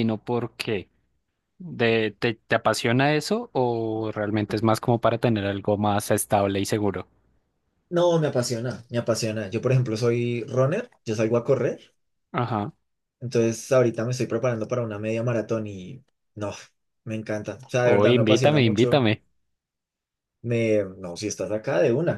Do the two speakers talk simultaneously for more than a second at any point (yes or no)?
yes